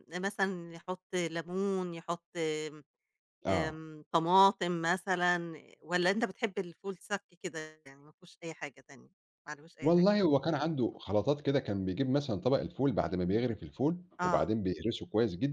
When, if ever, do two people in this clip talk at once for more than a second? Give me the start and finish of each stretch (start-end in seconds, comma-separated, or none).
none